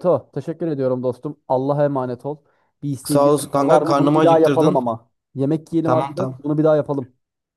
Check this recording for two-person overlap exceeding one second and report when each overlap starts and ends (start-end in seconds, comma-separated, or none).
3.0-4.8